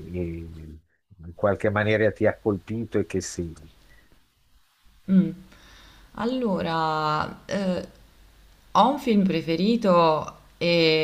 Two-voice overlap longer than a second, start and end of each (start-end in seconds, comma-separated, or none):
none